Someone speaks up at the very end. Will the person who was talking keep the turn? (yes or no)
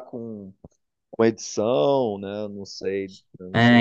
no